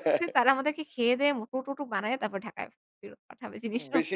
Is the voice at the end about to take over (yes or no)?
yes